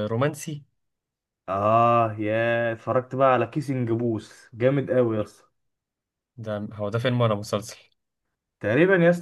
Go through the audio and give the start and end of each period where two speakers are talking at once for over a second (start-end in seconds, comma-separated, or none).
none